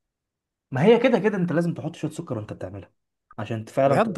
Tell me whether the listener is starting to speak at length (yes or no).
no